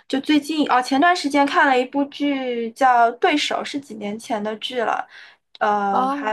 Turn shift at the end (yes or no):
yes